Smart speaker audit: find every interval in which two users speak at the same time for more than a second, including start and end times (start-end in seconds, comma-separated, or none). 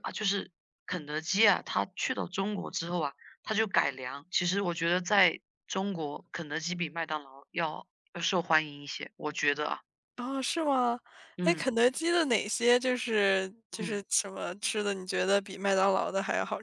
none